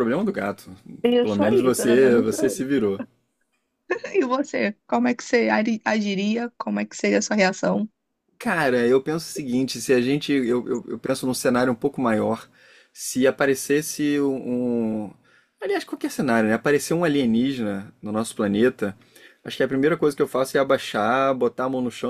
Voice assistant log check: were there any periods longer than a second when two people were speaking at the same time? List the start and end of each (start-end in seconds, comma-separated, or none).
1.2-2.6